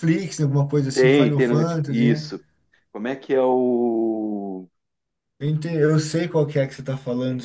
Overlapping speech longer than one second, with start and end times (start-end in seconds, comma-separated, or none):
0.9-2.3